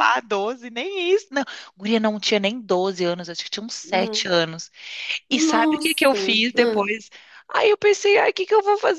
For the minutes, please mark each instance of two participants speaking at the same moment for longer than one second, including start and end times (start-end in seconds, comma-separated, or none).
5.3-6.9